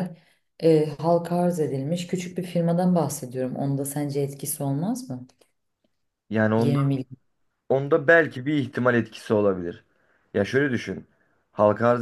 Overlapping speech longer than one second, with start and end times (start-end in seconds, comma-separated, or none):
none